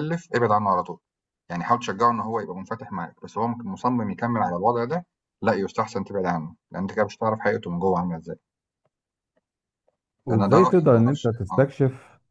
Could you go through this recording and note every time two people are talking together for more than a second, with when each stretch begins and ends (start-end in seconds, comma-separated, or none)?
10.3-11.7